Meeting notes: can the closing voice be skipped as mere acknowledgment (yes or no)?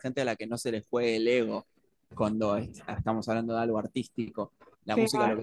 yes